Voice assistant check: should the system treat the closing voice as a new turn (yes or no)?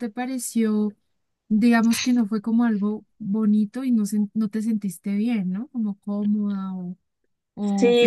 yes